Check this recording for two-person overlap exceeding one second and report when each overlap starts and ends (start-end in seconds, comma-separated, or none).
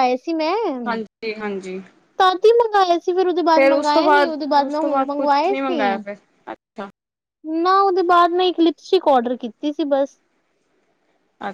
3.5-5.8